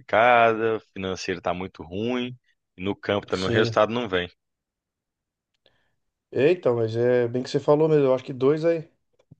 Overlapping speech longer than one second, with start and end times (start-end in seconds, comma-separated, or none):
none